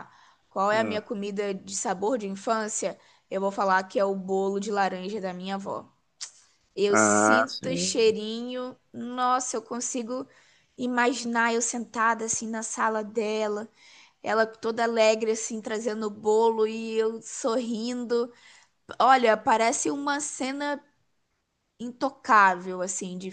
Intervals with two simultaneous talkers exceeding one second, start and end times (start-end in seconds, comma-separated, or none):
6.9-8.2